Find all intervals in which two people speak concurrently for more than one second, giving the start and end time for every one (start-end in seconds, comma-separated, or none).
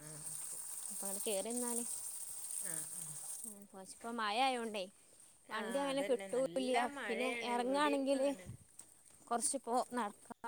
5.6-8.3